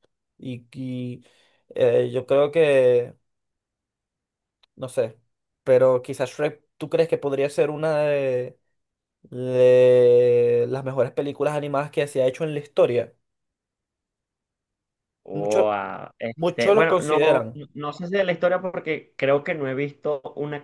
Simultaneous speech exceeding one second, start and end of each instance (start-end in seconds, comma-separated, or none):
16.4-17.6